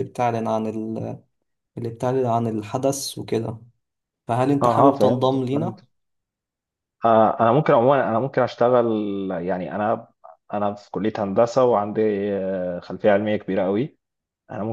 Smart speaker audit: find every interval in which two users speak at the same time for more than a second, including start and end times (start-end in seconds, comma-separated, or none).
4.6-5.8